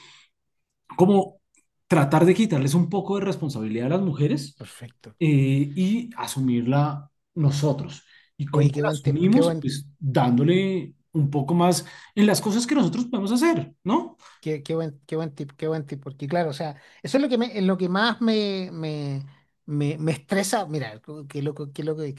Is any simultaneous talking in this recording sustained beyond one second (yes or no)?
yes